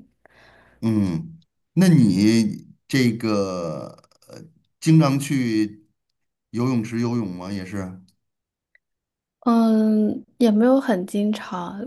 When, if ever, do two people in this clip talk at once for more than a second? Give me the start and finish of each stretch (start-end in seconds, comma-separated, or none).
none